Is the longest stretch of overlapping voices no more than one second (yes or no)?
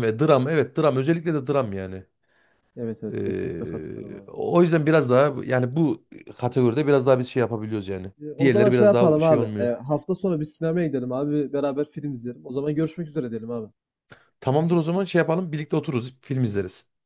no